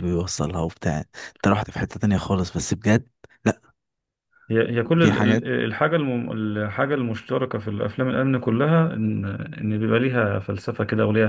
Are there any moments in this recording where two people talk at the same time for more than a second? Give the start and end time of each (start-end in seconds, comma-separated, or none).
none